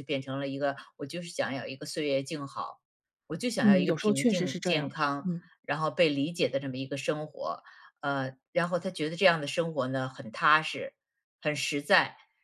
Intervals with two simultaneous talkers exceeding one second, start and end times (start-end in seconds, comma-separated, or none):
3.6-5.4